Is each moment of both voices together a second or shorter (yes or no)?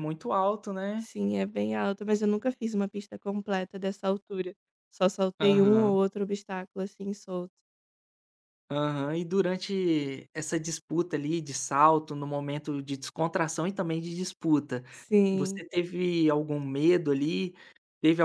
yes